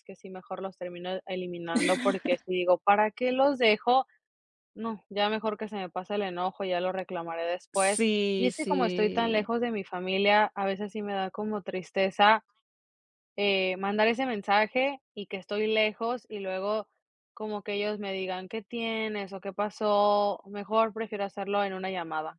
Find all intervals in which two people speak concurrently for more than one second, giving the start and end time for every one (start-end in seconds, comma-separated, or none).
7.7-9.5